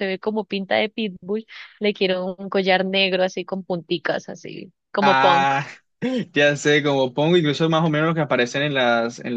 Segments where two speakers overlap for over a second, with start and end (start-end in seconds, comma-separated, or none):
none